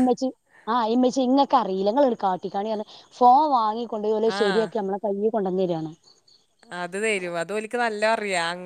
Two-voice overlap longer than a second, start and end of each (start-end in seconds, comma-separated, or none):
none